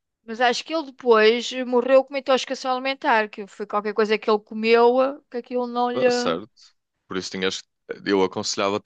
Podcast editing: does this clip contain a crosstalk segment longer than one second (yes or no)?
no